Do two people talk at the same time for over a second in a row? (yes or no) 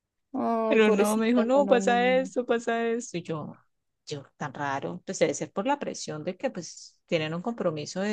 yes